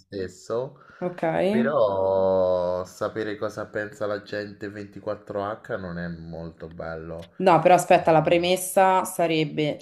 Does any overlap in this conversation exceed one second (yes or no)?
no